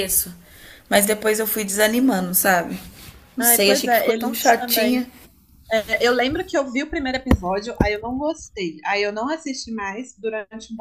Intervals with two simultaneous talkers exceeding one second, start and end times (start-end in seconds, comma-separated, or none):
3.4-5.1